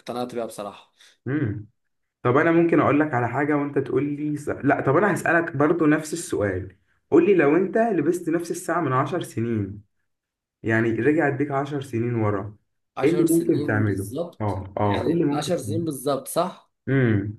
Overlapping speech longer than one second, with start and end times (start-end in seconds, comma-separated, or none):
13.0-15.9